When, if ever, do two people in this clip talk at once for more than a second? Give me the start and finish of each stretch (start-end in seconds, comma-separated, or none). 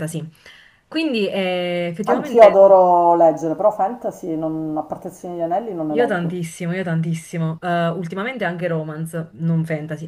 none